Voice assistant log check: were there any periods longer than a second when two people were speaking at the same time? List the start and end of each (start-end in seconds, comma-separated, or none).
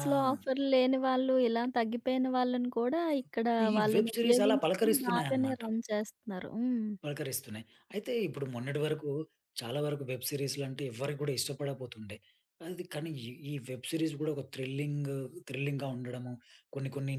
3.7-5.6